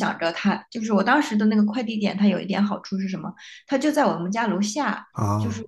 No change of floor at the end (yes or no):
yes